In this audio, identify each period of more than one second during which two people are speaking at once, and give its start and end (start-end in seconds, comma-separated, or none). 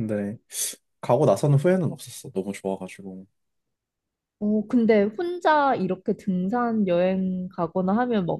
none